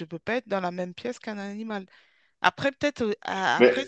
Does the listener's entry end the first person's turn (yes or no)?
no